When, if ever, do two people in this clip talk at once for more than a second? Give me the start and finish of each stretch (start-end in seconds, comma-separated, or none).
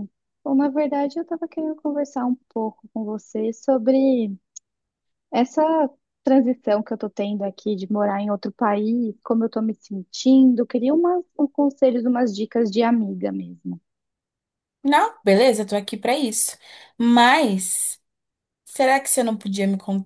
none